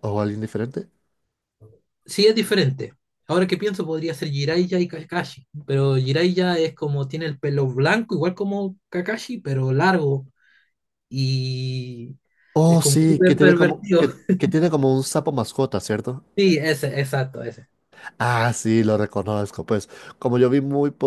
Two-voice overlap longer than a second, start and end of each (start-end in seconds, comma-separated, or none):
12.7-14.1